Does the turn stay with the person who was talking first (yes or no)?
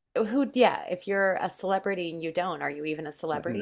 no